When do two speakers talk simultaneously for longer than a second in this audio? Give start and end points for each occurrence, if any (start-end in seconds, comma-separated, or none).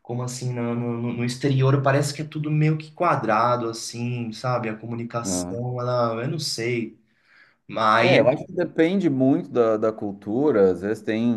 none